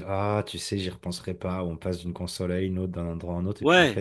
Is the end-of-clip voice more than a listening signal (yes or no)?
no